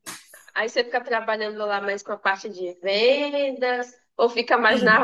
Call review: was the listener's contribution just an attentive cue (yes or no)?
yes